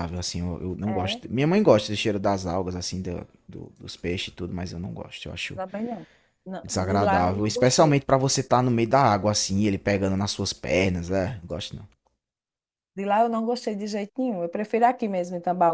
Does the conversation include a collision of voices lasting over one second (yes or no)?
yes